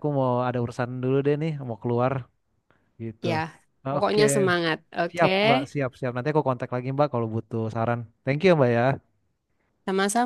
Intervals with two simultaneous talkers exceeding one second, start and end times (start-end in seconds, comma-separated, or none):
none